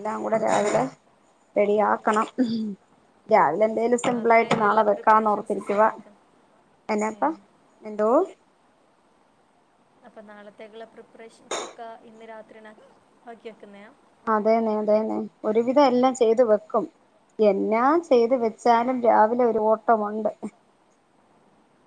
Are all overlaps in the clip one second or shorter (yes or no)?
no